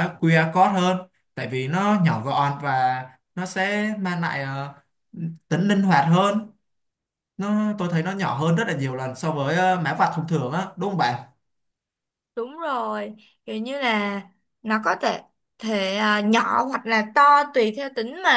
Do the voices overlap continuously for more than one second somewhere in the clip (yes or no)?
no